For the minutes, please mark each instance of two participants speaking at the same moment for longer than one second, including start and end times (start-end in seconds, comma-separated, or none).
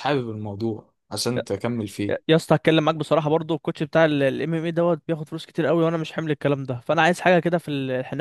none